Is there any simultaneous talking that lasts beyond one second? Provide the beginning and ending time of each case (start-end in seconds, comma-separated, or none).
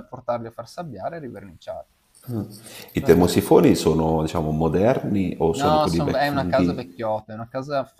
5.5-6.9